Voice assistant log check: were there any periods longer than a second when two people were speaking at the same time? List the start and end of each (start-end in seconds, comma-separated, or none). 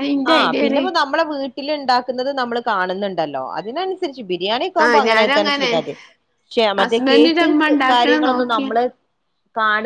6.8-8.7